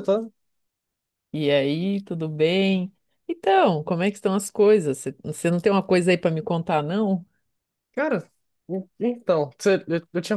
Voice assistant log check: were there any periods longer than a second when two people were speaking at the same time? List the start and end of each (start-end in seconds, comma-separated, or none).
none